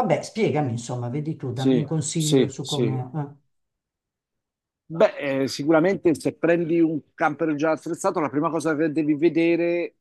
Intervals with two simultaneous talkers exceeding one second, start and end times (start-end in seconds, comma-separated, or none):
1.5-3.0